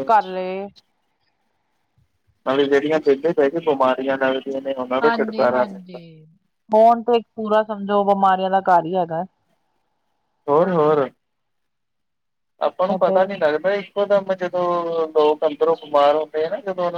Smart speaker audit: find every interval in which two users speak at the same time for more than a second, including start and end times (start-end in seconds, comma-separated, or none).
none